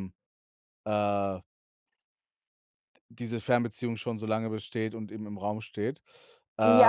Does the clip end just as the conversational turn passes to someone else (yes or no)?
yes